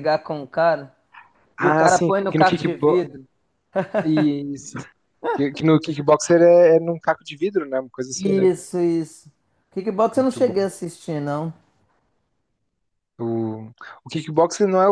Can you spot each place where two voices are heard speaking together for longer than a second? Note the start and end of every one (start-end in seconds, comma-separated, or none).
1.6-3.0